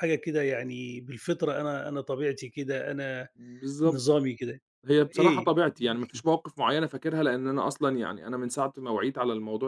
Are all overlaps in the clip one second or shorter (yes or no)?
yes